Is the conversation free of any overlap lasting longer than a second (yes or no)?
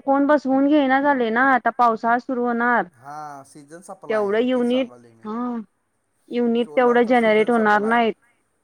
no